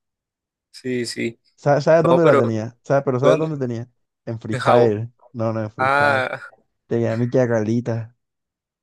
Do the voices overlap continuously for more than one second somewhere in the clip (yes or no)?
no